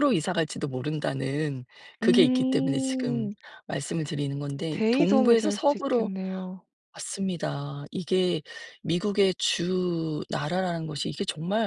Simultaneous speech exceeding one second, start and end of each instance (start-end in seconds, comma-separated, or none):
2.0-3.3, 4.7-6.1